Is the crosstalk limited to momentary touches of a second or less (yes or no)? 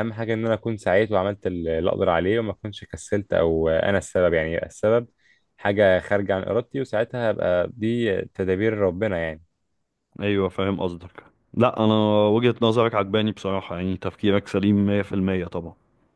yes